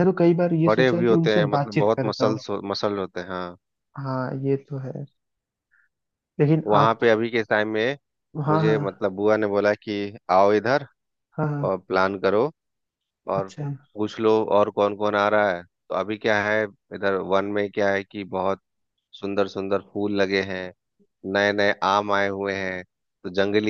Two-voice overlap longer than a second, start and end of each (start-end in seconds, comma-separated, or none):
0.7-2.4